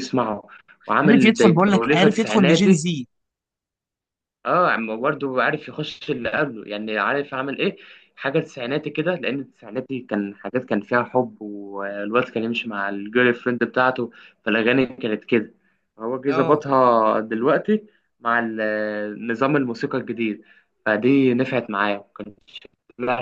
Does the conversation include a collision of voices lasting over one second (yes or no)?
yes